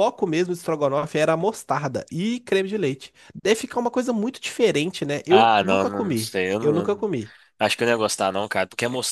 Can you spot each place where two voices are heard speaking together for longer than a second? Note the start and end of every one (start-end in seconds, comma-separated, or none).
5.3-7.1